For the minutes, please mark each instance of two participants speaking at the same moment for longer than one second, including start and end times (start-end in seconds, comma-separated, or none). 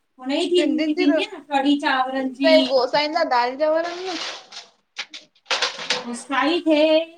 none